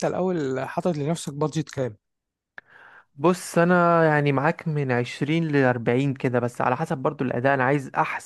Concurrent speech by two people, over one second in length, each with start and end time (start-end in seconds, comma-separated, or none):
none